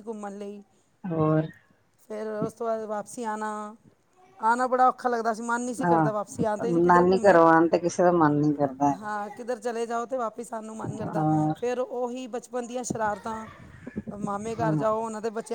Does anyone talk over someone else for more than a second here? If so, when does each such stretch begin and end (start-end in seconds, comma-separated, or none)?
5.8-7.4